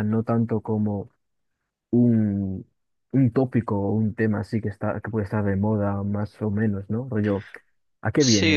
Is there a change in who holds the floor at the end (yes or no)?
yes